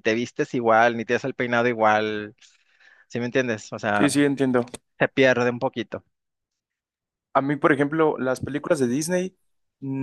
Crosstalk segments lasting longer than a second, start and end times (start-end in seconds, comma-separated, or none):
none